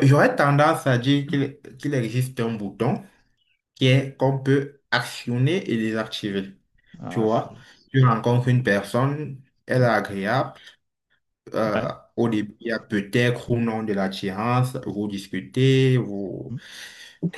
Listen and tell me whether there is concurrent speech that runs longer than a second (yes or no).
yes